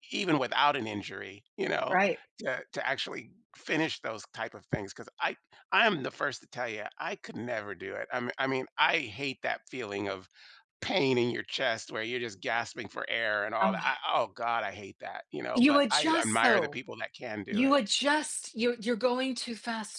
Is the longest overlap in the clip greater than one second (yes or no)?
yes